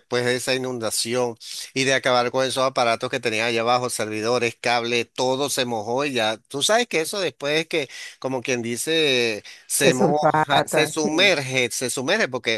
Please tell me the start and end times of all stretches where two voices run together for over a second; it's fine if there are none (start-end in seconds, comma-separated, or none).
9.8-11.3